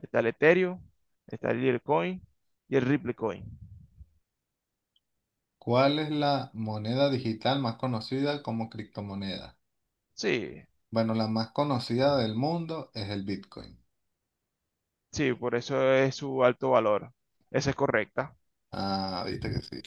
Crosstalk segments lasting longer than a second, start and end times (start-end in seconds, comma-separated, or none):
none